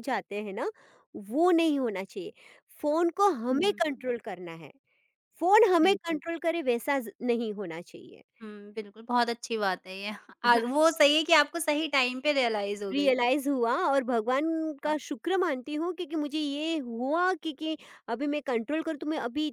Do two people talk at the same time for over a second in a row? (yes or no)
no